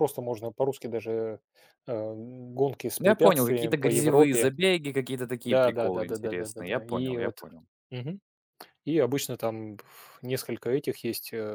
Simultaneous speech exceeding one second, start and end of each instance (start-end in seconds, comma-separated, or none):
3.0-4.5, 5.4-7.4